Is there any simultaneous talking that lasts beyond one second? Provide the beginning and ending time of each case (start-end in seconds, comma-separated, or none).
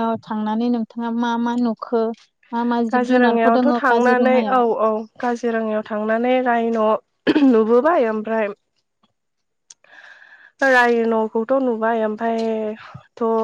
2.9-4.6